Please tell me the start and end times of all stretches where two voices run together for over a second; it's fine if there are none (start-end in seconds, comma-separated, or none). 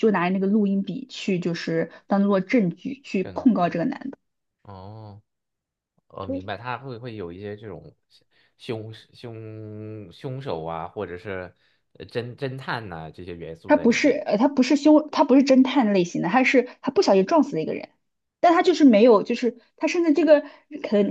none